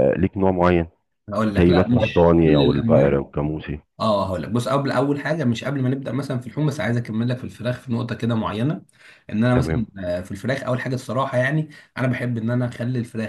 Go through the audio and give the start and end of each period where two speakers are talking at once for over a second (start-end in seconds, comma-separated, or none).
1.6-3.2